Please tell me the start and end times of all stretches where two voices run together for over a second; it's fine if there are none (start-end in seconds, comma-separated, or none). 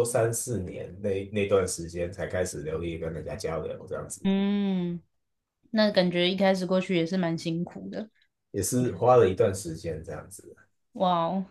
none